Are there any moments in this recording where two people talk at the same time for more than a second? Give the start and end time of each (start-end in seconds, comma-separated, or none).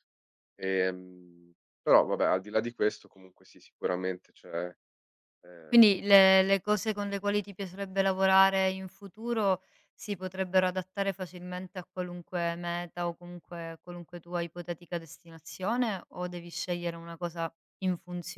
none